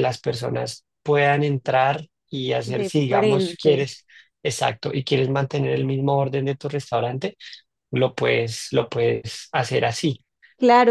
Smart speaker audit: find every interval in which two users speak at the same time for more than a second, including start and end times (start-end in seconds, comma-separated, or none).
2.6-3.9